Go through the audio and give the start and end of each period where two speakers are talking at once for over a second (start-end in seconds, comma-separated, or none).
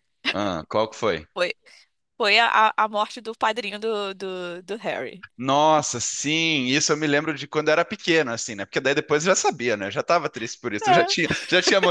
none